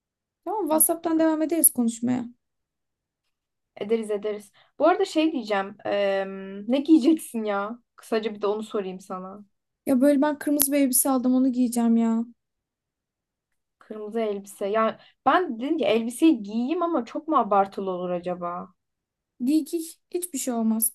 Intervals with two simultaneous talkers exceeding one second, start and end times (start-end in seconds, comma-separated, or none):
none